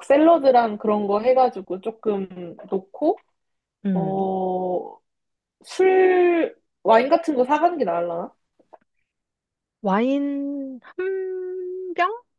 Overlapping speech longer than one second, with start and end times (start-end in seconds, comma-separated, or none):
none